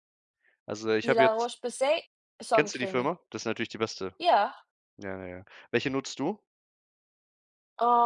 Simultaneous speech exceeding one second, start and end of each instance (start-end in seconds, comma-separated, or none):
none